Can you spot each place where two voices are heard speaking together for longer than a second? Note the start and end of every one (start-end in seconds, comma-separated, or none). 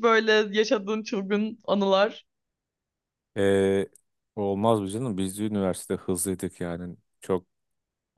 none